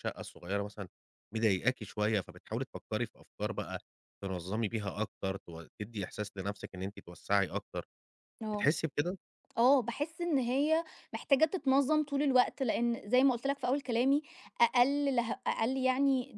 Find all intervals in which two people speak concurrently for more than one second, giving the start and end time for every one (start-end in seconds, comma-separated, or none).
none